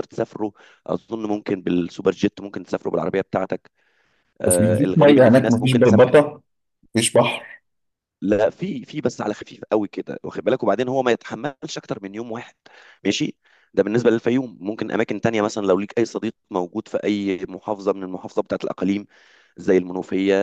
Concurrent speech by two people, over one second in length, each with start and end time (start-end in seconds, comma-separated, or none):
4.5-6.2